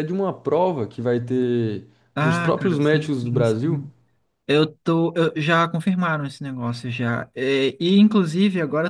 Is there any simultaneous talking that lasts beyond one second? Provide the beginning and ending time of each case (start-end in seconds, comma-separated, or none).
2.1-3.8